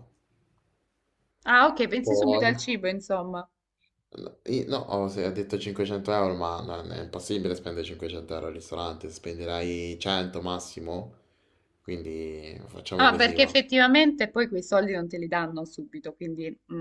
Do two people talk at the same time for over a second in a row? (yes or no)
no